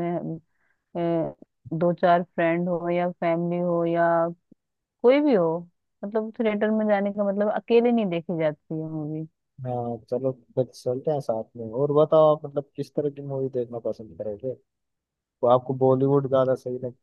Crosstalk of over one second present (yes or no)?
no